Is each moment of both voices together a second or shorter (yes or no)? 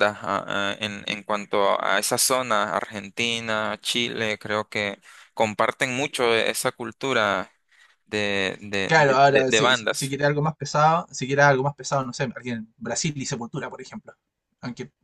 no